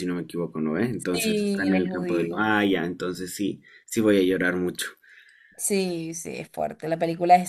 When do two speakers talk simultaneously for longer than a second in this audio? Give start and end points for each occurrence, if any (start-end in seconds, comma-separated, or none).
1.1-2.5